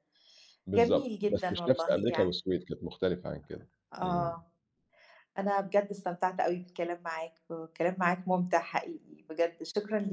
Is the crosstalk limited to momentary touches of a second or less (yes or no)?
no